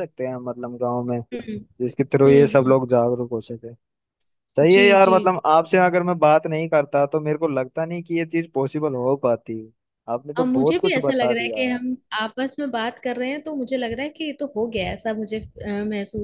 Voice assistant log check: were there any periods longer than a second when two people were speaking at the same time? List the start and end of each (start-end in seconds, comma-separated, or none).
10.4-11.6